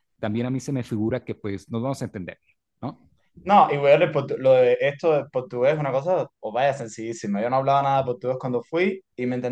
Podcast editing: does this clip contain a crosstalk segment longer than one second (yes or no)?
no